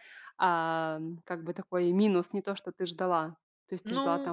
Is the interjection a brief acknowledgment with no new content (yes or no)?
yes